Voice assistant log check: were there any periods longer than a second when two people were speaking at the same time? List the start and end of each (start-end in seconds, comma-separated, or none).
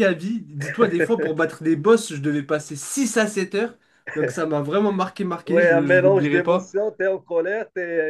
5.5-6.7